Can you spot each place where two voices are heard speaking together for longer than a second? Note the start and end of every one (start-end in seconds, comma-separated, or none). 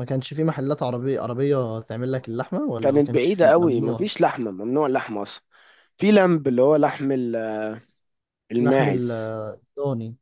2.8-4.1